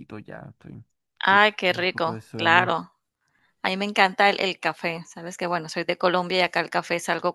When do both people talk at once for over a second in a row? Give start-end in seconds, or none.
1.2-2.7